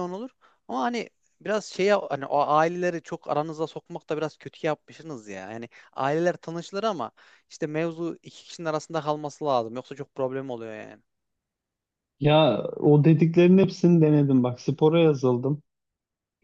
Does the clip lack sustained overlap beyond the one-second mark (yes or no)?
yes